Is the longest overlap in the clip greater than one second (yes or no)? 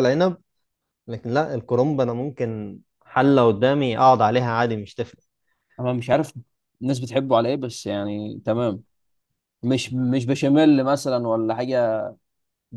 no